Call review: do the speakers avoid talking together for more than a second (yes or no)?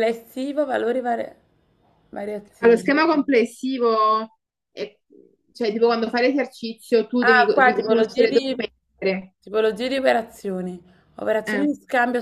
no